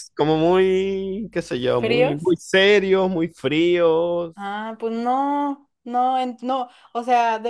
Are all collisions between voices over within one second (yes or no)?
yes